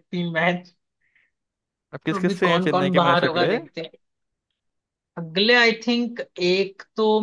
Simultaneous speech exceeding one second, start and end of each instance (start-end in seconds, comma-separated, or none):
2.1-3.6